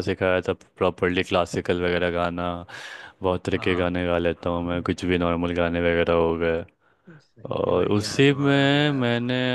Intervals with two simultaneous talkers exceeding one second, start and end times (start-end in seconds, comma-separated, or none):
7.6-9.0